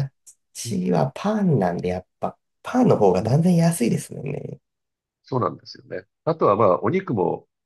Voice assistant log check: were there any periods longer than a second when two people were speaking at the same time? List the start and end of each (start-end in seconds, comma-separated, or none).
none